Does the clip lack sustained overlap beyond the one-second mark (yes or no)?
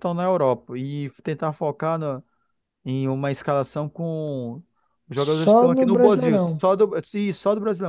no